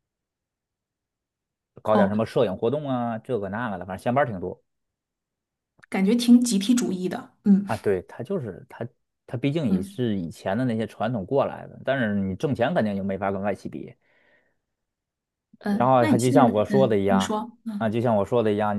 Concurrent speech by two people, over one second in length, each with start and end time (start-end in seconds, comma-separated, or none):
15.7-17.9